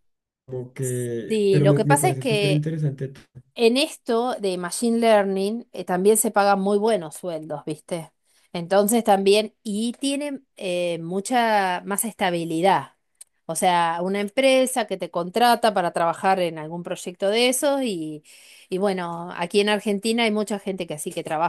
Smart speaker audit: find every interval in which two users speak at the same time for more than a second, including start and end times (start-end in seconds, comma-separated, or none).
1.3-2.7